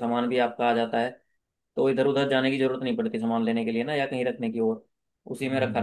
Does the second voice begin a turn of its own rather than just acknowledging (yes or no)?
yes